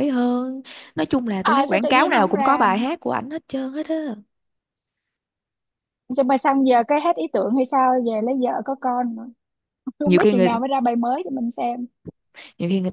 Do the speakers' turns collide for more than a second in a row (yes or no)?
yes